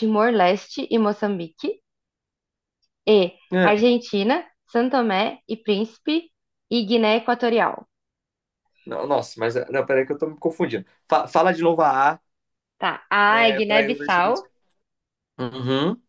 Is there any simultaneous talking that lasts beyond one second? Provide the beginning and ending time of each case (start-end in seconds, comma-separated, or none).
13.3-14.5